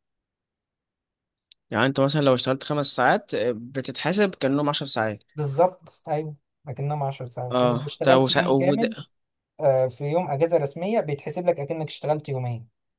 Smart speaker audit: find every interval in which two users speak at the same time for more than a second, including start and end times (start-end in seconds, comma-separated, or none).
7.5-8.9